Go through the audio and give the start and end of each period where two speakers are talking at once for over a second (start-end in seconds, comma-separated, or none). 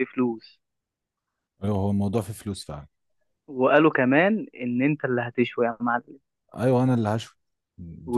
none